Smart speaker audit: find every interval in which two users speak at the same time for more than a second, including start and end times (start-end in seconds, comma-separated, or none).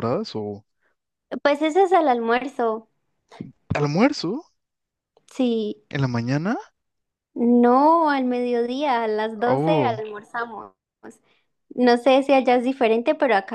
none